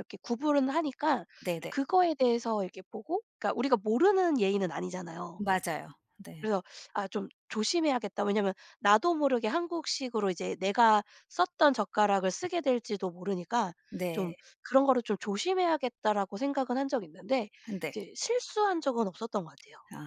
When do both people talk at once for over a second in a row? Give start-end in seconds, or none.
none